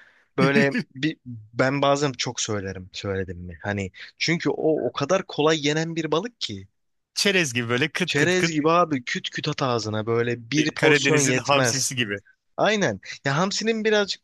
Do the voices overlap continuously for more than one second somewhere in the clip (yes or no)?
yes